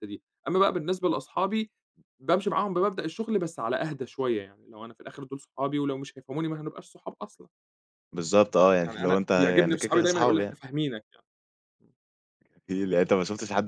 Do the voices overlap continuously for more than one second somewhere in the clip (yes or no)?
yes